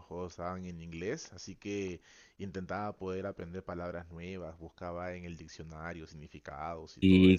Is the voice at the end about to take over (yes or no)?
yes